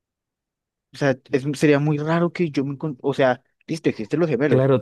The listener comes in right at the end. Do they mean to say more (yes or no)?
yes